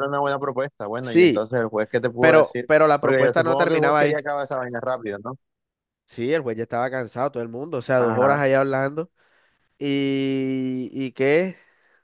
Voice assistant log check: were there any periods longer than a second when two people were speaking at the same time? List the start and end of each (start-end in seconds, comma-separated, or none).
2.2-4.2